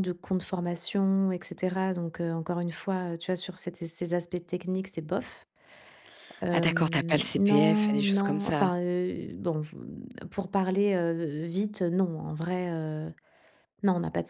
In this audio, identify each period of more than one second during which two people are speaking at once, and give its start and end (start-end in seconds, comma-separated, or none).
6.5-8.7